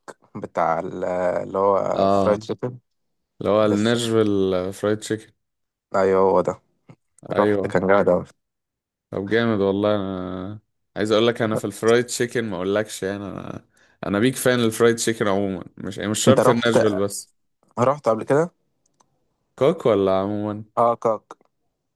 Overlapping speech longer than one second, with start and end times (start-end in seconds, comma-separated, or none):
none